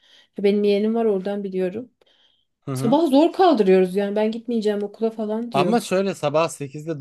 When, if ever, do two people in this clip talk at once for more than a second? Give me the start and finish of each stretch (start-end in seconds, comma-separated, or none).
none